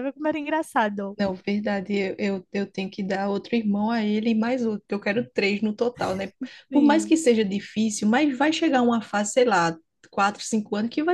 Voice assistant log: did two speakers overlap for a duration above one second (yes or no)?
no